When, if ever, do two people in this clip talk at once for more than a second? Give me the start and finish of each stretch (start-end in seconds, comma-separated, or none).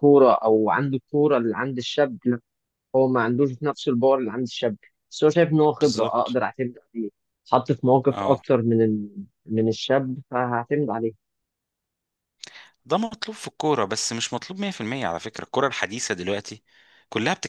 none